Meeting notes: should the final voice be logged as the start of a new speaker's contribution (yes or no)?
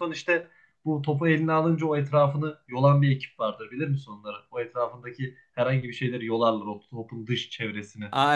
yes